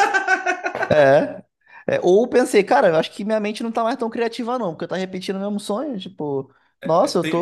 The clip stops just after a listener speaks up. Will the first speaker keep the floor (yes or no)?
no